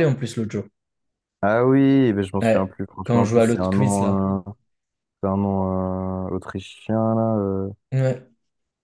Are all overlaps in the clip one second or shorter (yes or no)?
no